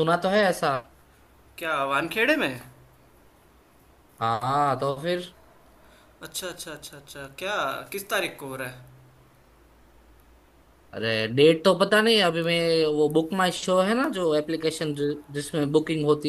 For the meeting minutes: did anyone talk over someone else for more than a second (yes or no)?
no